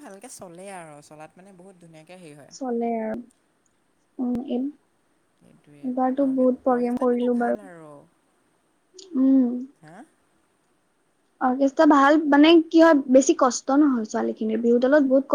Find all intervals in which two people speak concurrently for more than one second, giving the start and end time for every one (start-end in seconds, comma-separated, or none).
5.9-7.6